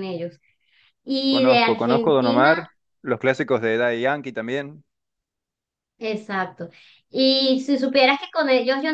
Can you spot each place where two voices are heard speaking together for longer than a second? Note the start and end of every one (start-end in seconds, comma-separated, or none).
1.3-2.6